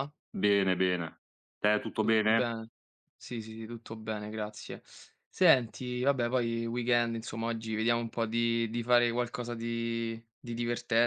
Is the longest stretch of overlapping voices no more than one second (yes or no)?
yes